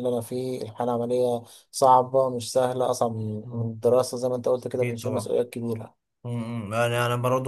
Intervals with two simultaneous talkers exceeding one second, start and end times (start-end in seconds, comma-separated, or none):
none